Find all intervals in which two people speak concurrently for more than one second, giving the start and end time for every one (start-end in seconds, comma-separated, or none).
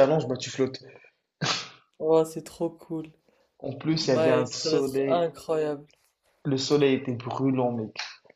3.9-5.3